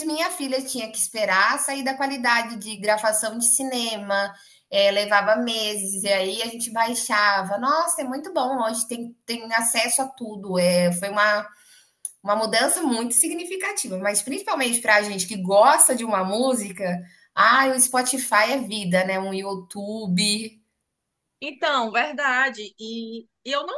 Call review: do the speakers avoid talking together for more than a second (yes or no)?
yes